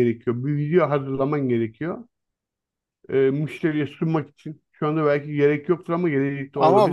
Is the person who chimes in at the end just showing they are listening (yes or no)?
no